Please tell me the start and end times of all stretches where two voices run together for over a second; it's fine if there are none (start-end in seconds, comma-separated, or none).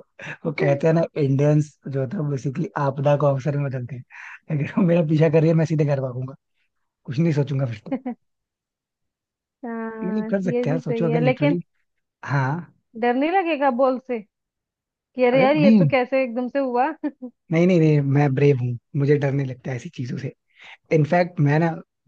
10.0-11.6